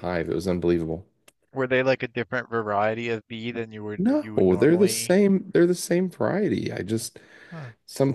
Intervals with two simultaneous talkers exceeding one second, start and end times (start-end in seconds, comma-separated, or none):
4.0-5.2